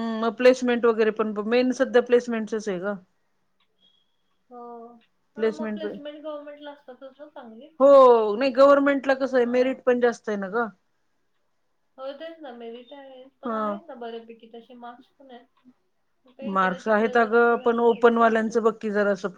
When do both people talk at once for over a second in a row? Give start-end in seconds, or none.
none